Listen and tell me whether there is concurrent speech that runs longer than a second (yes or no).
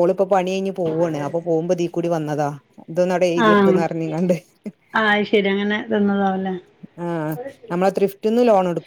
no